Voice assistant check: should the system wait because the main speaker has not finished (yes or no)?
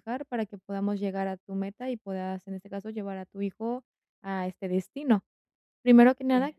yes